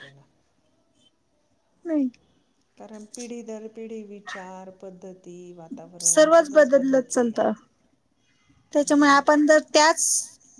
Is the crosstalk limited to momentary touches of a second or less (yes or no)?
yes